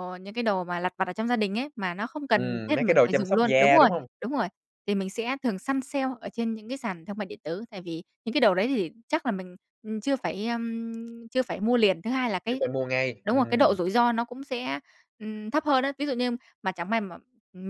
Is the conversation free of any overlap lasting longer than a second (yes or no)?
no